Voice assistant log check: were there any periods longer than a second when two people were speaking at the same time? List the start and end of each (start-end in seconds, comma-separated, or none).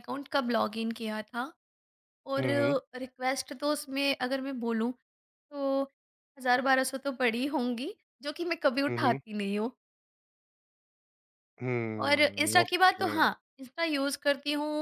12.0-13.2